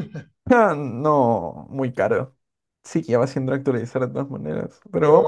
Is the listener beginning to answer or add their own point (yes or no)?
no